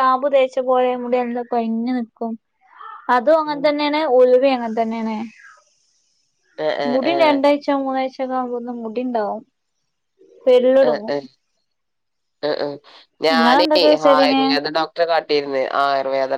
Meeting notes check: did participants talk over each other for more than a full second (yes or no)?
no